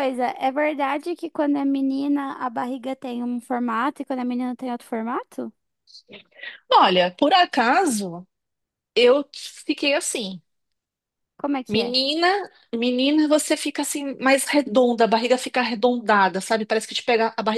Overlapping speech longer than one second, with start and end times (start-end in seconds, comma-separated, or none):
none